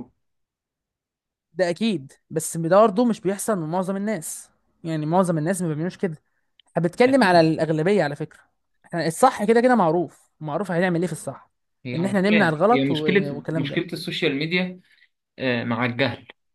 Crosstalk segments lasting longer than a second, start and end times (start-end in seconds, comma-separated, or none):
11.9-13.8